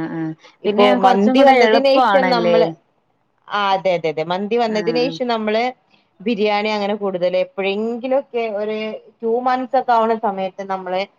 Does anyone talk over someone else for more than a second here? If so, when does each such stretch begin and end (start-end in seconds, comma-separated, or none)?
0.7-2.6